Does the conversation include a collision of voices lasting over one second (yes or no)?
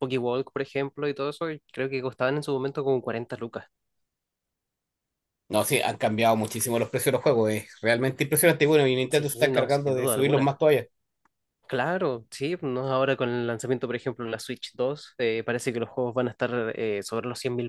yes